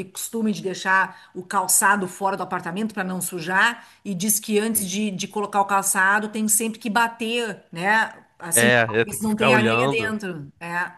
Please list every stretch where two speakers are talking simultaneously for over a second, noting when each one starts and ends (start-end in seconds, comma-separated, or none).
8.5-10.1